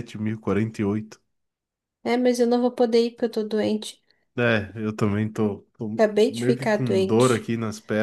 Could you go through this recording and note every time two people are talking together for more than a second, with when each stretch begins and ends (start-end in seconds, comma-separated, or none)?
5.9-7.5